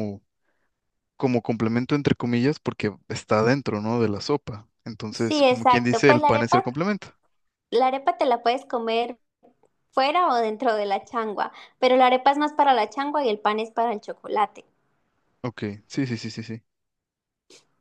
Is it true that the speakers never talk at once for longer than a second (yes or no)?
no